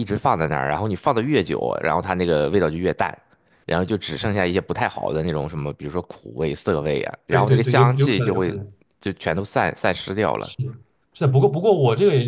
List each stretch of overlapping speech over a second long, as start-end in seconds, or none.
7.3-8.6